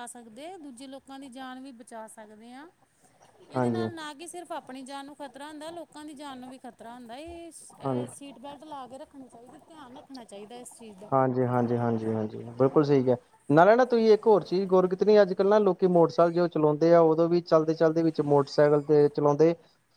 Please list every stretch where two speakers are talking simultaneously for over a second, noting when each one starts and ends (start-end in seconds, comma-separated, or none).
none